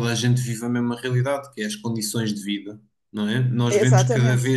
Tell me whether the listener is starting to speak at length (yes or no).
no